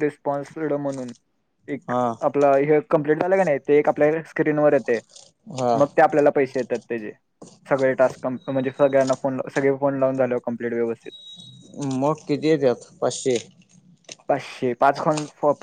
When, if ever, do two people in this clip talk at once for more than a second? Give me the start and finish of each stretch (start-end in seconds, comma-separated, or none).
none